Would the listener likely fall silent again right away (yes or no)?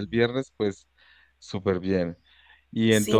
no